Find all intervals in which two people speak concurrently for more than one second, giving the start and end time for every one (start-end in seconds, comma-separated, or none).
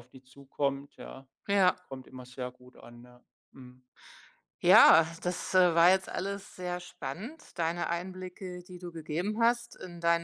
none